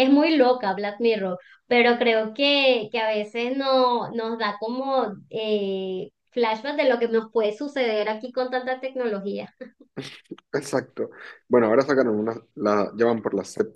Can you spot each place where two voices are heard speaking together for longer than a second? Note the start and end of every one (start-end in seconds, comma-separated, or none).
none